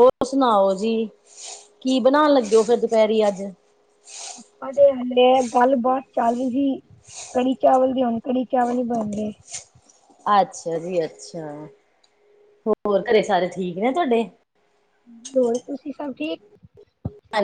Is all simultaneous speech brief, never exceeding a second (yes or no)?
yes